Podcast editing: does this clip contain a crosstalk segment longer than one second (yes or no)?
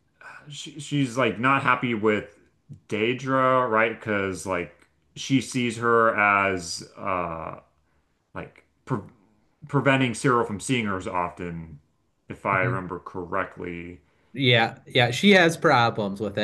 no